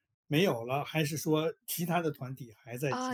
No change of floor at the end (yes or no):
no